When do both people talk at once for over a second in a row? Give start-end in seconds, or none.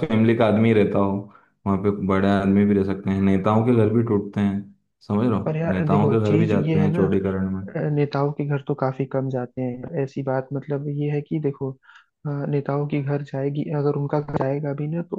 5.4-7.0